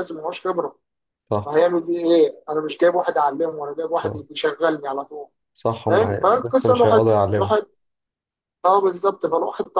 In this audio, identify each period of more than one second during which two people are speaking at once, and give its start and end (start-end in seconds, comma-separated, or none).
5.9-7.5